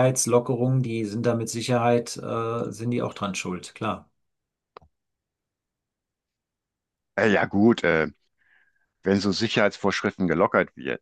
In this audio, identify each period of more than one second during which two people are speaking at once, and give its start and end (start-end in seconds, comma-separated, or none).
none